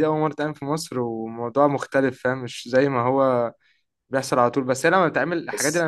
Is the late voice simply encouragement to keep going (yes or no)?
yes